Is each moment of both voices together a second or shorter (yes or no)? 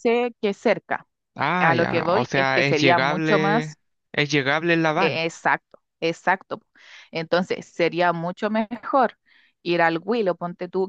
no